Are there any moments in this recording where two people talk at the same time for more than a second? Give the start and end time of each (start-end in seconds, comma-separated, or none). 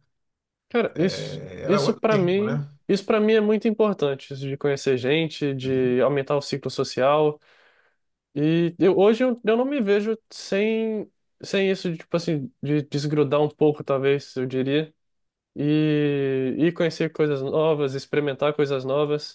0.9-2.6